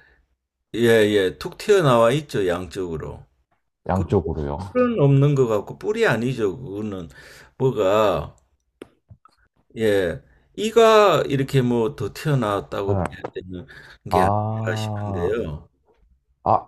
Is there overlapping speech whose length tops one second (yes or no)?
yes